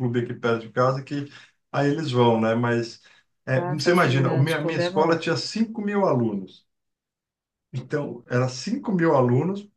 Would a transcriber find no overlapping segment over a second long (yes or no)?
no